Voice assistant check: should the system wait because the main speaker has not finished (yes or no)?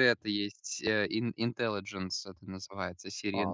no